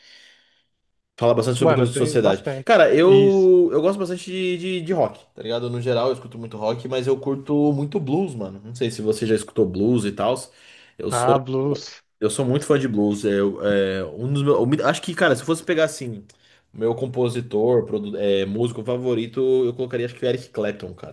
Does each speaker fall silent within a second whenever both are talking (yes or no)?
no